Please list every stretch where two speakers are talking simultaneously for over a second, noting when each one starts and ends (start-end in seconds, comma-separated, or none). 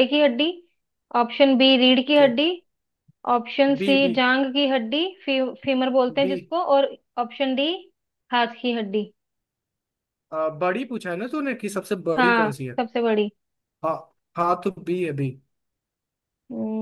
none